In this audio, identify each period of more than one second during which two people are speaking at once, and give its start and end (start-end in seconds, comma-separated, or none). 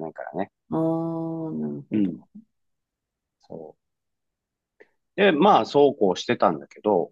none